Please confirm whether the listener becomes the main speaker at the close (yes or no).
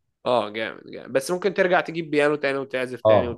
yes